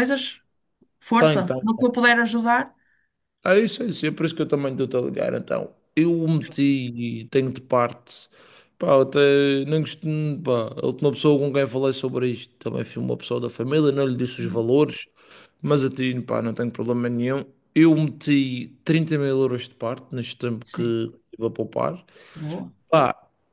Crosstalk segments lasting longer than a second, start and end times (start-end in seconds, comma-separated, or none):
none